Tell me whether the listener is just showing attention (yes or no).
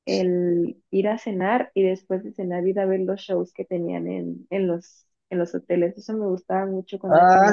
no